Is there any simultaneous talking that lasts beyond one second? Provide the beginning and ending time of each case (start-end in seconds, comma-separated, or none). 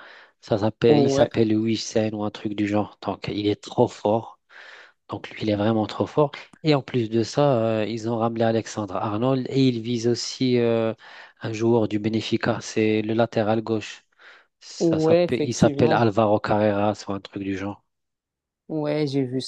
14.8-16.0